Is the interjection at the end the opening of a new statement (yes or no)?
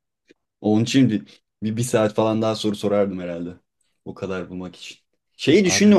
no